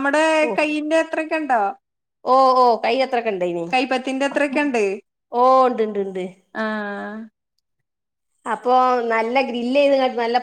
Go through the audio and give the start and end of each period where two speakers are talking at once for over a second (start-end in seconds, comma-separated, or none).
none